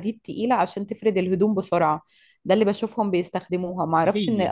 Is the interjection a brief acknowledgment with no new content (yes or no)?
yes